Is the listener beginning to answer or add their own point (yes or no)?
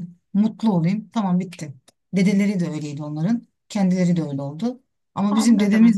no